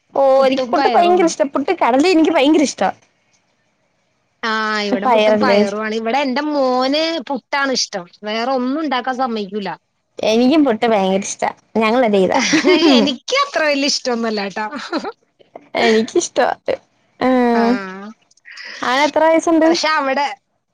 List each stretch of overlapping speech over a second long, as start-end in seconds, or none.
none